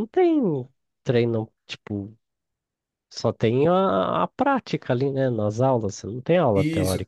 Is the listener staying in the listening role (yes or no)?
no